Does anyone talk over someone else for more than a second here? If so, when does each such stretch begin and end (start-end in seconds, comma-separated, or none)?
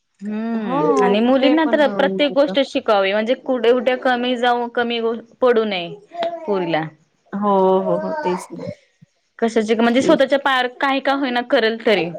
0.7-2.5